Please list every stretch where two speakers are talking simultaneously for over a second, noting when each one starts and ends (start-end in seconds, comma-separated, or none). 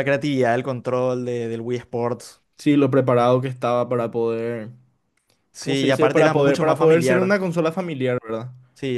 5.6-7.4